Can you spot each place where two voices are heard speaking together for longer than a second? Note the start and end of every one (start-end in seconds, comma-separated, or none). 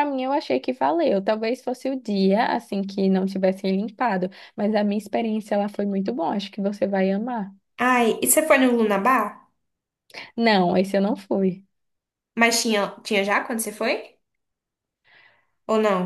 none